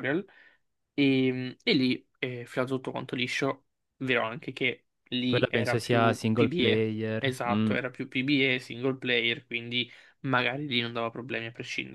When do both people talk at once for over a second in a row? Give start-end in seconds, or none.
5.3-7.8